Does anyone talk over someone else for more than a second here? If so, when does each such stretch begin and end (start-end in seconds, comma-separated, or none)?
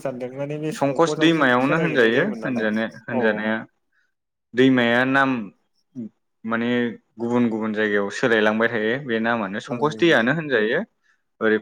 0.8-3.5